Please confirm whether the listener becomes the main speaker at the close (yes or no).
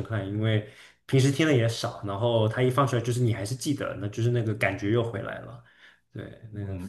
yes